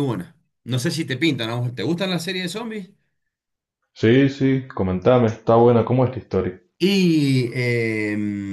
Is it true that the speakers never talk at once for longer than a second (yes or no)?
yes